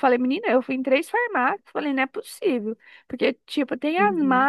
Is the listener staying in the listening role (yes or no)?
yes